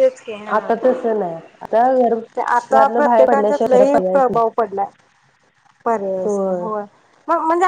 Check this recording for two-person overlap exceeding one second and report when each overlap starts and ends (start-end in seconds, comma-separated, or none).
2.5-4.4